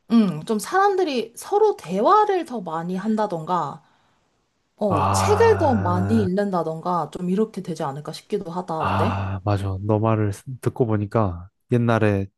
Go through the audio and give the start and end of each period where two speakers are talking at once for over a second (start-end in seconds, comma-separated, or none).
4.9-6.3